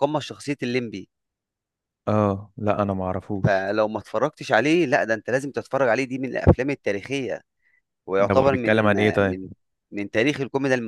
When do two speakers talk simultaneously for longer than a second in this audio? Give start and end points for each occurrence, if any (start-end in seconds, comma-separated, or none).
8.2-9.4